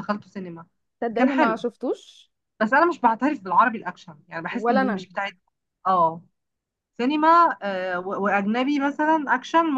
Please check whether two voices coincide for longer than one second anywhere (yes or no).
no